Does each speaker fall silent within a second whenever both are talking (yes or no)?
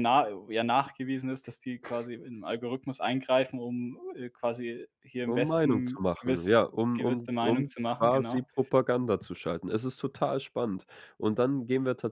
no